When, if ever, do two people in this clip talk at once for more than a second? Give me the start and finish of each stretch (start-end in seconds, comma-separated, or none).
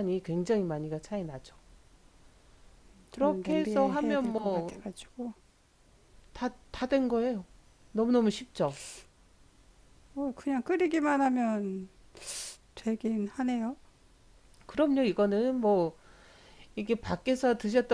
3.1-4.8